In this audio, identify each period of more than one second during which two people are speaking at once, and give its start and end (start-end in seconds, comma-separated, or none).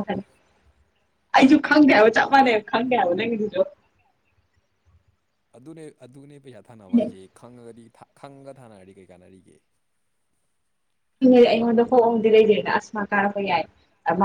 none